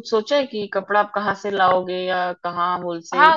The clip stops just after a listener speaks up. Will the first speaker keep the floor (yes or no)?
no